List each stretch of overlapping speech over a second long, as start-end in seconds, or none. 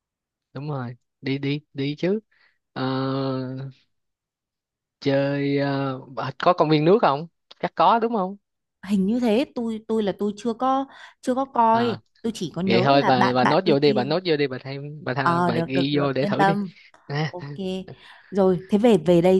12.7-14.1, 15.2-16.6